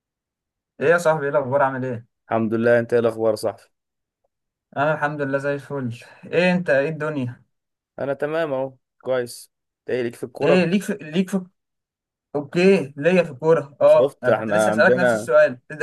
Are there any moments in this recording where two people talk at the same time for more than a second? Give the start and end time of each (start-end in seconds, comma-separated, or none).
13.9-15.3